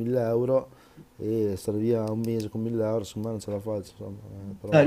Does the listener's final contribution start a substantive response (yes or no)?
yes